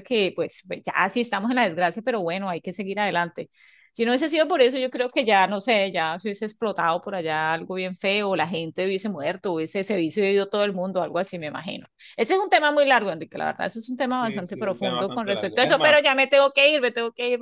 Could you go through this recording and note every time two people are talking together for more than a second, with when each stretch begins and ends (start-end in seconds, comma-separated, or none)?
14.2-16.0